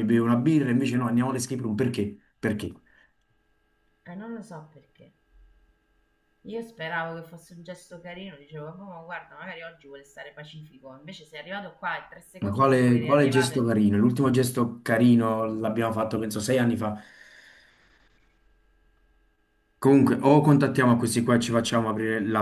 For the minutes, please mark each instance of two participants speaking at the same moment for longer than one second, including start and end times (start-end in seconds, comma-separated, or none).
12.4-13.7